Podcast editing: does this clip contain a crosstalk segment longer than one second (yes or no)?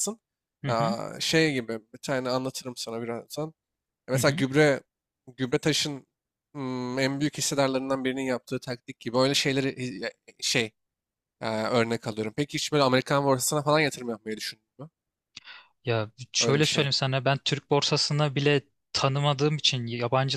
no